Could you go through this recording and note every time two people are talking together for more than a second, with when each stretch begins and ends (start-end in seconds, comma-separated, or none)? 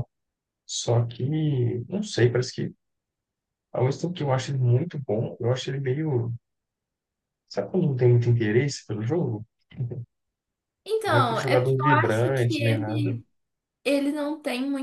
11.1-13.1